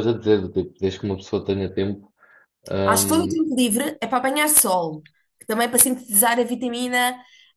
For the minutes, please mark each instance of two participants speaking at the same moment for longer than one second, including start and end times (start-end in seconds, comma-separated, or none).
none